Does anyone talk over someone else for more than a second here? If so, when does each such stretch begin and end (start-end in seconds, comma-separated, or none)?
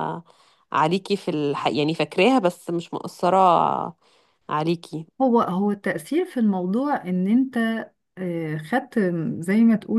none